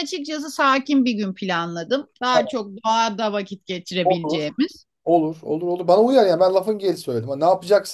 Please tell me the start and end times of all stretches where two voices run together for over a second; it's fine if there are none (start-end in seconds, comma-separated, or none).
none